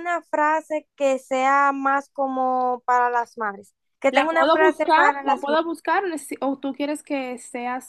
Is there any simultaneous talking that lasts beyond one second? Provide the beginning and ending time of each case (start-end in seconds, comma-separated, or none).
4.1-5.5